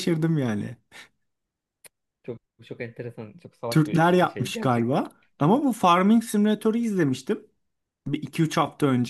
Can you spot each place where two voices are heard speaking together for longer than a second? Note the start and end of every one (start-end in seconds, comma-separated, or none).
3.7-5.0